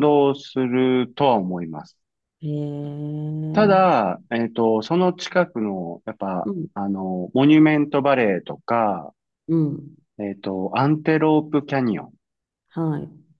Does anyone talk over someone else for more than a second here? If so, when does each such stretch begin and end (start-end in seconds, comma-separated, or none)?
none